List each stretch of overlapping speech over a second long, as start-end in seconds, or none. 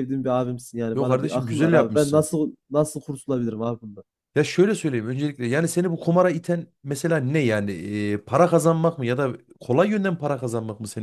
0.9-2.3